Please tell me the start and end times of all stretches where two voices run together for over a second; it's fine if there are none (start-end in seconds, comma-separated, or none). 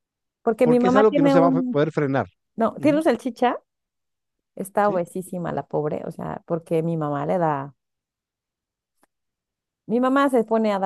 0.6-1.8